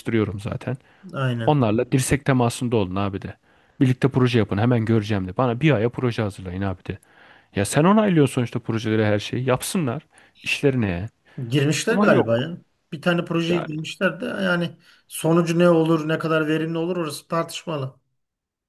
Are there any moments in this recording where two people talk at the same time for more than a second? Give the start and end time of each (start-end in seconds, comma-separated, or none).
none